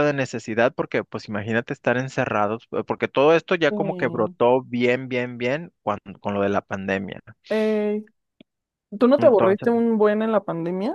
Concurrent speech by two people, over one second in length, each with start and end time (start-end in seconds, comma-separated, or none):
none